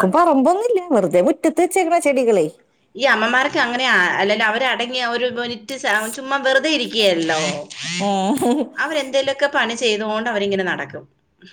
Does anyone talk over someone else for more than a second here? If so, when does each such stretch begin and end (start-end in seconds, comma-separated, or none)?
none